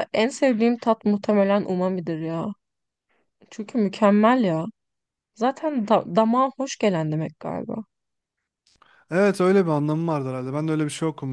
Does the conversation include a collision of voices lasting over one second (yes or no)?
no